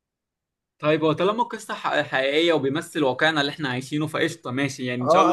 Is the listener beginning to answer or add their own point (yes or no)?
yes